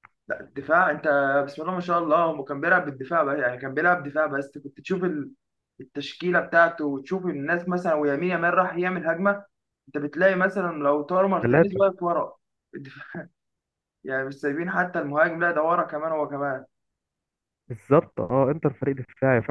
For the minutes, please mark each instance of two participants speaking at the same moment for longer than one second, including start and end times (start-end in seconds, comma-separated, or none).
none